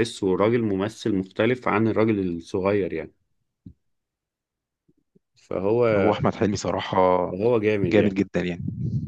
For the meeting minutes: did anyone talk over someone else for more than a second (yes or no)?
no